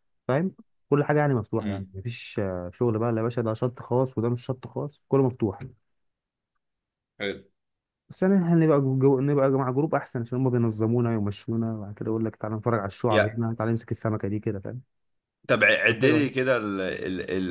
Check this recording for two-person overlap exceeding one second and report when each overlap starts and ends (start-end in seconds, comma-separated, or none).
none